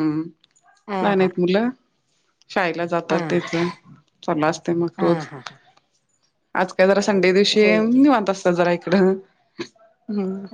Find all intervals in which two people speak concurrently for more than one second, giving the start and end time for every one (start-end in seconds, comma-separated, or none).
none